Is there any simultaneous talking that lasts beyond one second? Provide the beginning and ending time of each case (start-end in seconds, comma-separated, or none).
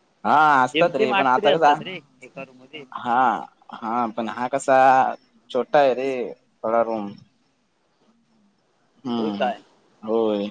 0.7-2.8